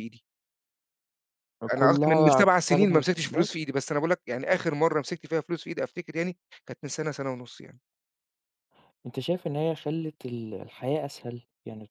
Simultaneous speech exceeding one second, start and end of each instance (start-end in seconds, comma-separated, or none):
1.7-3.5